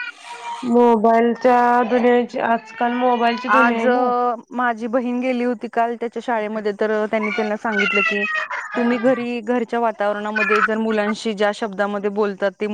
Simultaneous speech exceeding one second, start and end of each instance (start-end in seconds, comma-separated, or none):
none